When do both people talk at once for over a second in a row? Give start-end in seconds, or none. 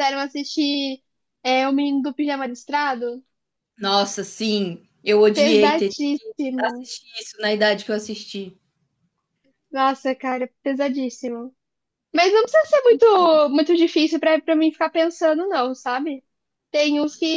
none